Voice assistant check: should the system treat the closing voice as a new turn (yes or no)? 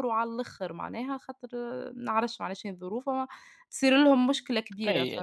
yes